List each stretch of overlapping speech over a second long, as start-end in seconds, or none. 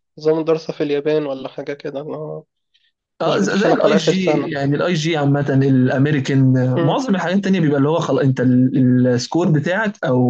3.2-4.5